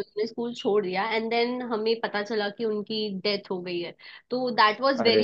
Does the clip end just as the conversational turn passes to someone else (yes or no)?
no